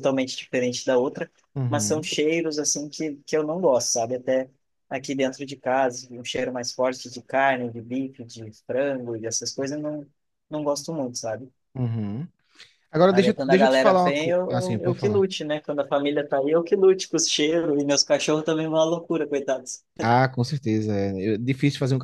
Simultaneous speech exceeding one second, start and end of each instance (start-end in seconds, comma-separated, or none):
13.1-15.2